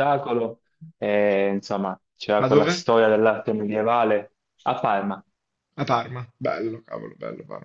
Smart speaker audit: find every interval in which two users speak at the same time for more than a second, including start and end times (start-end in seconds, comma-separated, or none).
none